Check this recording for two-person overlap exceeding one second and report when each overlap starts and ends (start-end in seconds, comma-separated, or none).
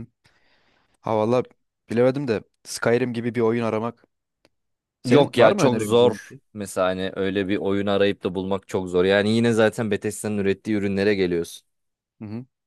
5.0-6.4